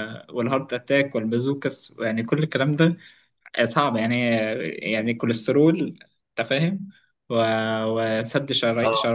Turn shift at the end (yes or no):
no